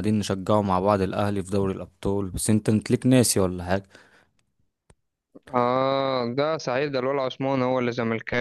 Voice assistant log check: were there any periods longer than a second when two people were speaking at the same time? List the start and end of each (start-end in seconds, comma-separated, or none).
none